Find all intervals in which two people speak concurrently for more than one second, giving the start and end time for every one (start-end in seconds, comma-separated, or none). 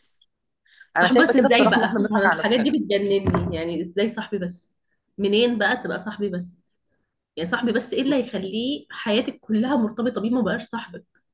1.0-2.7